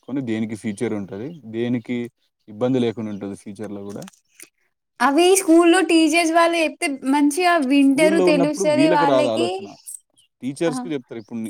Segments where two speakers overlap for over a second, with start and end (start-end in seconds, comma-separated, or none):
7.8-9.5